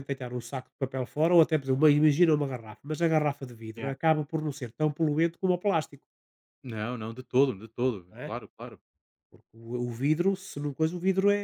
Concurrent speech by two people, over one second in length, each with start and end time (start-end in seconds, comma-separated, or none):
none